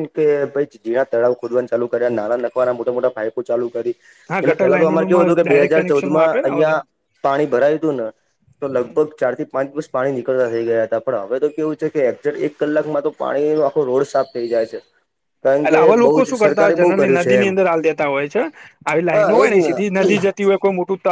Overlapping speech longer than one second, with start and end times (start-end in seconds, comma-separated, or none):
4.3-6.8, 15.6-17.5